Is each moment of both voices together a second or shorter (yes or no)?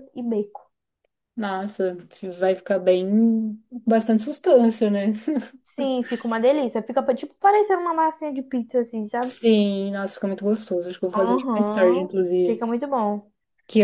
no